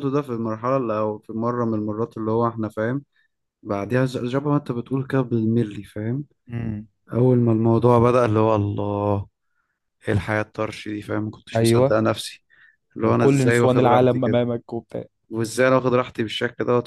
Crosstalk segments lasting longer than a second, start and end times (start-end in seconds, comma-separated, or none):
13.0-14.4